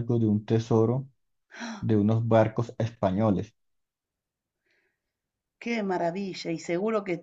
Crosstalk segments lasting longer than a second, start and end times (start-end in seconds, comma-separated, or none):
none